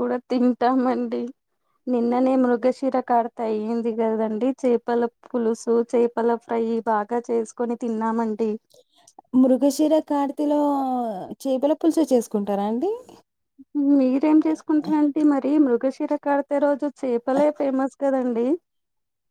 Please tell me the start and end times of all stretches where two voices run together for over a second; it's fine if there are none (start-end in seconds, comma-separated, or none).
none